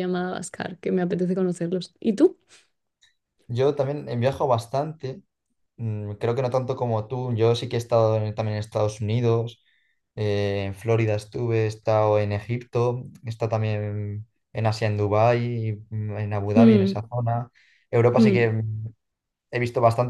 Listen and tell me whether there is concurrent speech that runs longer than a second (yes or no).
no